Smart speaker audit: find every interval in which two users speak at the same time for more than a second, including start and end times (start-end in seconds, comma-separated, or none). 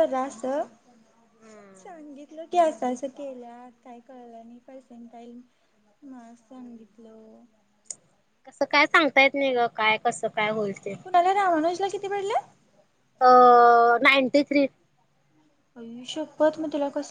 none